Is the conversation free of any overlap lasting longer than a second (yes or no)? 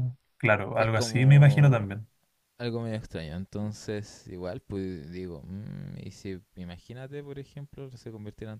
no